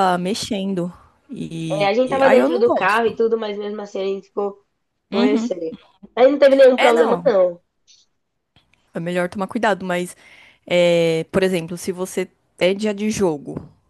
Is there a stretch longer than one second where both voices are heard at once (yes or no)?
yes